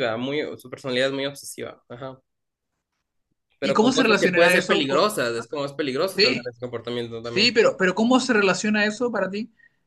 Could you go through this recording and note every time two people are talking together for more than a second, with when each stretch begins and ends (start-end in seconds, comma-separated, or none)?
3.6-5.0